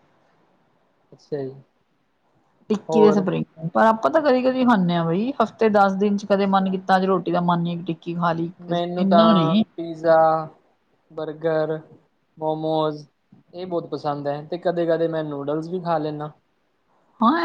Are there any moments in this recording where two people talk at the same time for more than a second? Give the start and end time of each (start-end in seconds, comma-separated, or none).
none